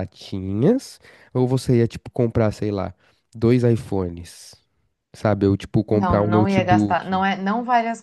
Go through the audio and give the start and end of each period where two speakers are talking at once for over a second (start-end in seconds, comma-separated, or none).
5.9-7.2